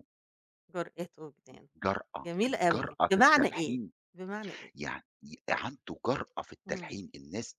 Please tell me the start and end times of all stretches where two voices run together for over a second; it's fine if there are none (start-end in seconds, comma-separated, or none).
2.2-3.8